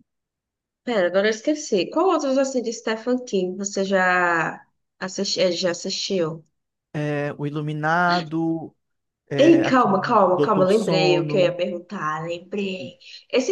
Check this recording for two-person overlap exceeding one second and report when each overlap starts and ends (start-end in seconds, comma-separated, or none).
9.4-11.6